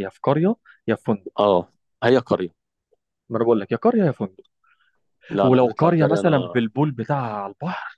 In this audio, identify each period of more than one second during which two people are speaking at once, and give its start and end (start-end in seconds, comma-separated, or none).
5.4-6.6